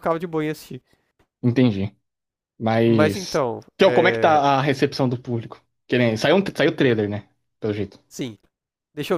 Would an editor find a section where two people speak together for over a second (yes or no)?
yes